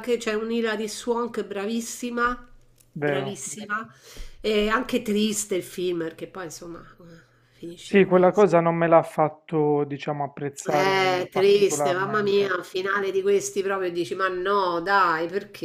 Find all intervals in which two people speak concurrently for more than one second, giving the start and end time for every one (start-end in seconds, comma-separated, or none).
10.7-12.6